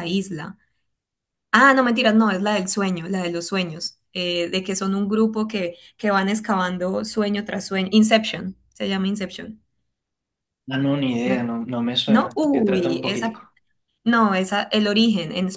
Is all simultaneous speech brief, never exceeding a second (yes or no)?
no